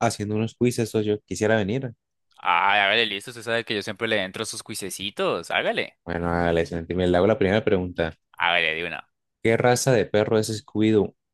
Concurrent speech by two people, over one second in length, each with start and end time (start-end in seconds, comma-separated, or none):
none